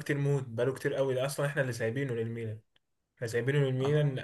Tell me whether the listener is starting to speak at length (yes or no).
no